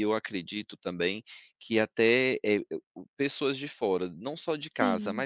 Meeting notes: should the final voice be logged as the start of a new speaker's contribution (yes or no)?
no